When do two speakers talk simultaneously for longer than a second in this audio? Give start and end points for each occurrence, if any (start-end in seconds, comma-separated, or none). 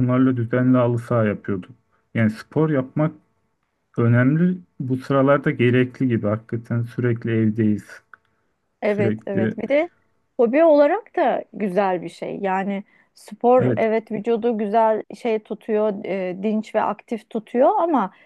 none